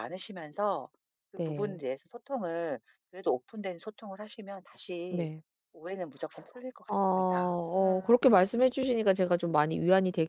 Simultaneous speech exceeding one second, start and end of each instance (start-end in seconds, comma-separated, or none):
none